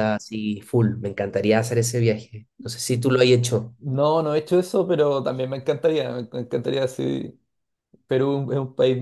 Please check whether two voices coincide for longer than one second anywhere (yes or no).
no